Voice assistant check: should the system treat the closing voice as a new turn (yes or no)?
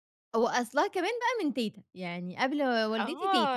yes